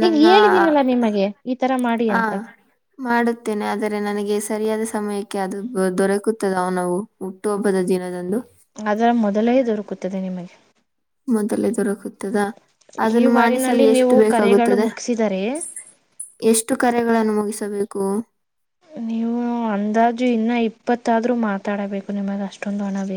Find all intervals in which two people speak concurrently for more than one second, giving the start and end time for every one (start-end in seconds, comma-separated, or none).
13.2-14.8